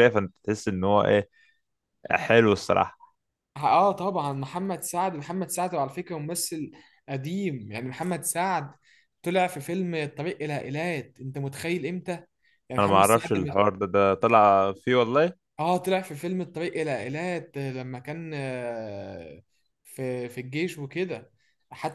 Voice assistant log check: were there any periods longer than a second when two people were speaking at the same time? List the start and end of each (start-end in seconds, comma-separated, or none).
none